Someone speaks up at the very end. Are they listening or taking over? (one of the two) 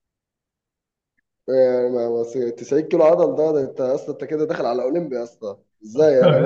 taking over